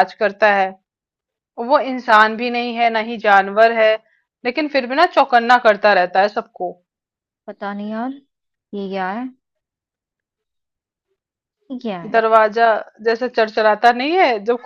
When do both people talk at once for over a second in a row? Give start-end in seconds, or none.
none